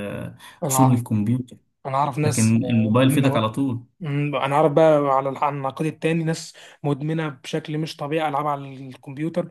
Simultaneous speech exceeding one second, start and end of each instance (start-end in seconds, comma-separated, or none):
2.2-3.5